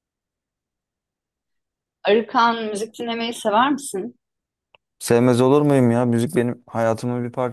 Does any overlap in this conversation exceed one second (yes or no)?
no